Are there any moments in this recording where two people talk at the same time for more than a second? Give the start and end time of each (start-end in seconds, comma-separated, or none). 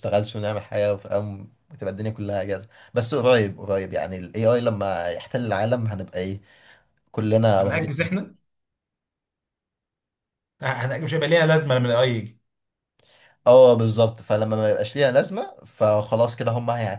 none